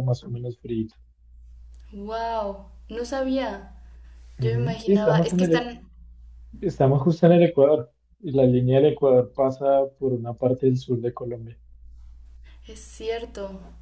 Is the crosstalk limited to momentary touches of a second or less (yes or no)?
no